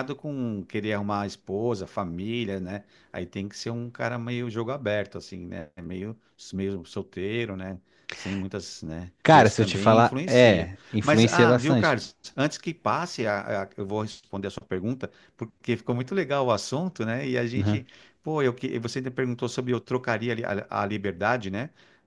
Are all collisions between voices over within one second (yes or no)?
no